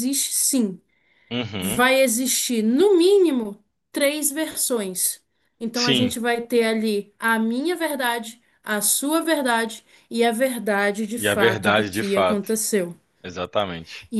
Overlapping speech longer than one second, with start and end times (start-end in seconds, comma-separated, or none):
11.2-12.5